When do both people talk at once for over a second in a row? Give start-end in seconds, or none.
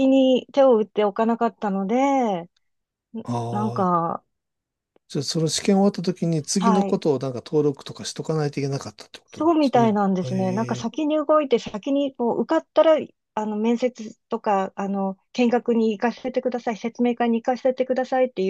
9.3-11.0